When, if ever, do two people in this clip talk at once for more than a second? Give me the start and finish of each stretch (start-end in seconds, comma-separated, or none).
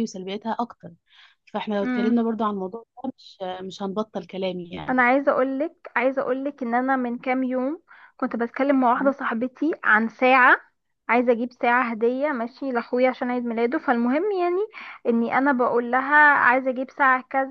none